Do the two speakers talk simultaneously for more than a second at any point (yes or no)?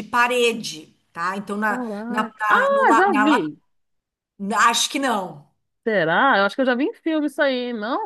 yes